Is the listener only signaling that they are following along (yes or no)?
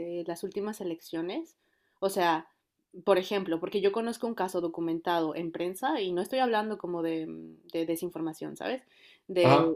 yes